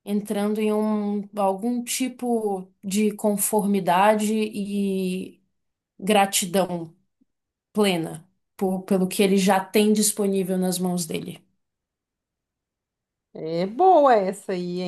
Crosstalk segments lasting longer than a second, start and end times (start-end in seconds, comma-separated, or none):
none